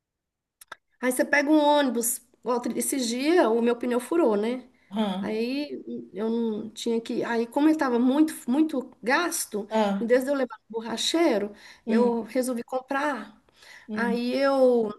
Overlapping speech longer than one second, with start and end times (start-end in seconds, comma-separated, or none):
none